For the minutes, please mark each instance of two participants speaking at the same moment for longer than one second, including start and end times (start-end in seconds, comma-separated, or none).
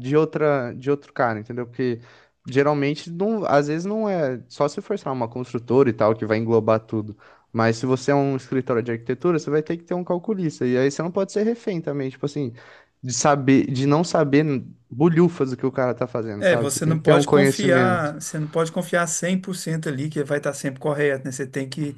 16.4-18.1